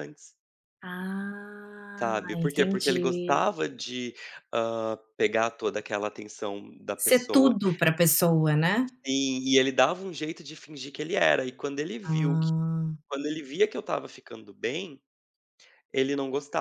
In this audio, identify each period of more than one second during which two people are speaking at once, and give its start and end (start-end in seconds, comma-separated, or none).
2.0-3.4